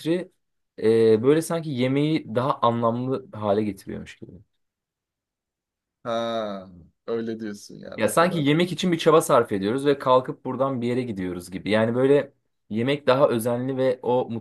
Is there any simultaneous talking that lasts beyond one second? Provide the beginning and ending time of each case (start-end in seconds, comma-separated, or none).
none